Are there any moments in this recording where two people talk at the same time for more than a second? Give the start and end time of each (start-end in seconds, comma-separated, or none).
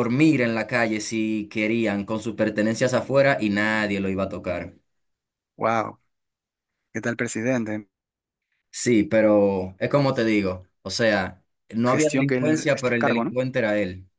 11.8-13.3